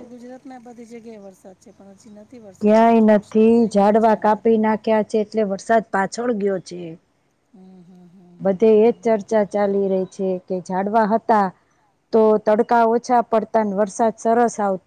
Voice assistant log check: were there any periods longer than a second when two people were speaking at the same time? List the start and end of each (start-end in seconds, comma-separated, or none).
2.6-4.5